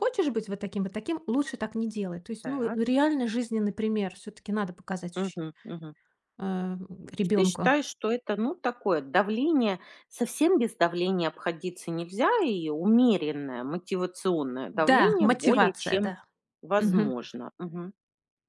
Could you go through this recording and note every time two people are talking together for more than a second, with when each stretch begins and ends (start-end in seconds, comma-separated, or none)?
14.9-16.1